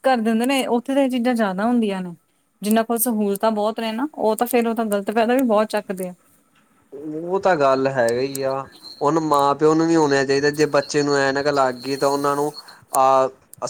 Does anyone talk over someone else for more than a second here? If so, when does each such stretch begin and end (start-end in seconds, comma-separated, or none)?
none